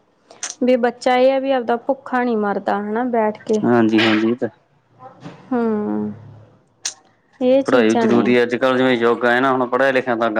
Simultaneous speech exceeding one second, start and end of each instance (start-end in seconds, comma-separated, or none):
none